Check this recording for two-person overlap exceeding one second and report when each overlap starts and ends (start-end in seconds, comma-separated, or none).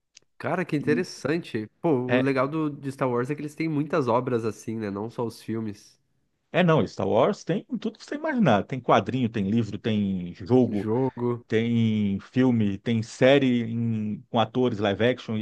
none